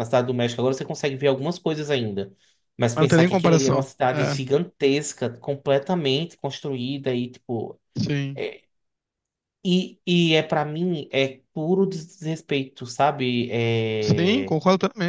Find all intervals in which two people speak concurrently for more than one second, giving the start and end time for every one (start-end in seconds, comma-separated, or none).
3.0-4.4